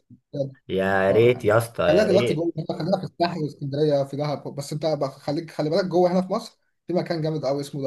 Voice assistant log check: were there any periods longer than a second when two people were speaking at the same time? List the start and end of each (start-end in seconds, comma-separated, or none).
1.1-2.5